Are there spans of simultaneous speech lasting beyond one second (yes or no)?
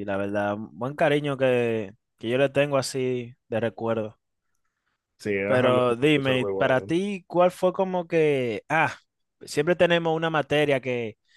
yes